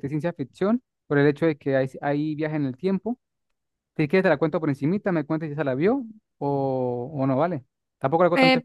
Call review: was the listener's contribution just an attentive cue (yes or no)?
no